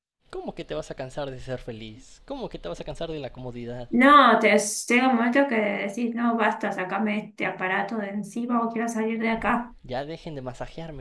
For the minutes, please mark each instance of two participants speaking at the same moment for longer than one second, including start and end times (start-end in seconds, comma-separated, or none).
none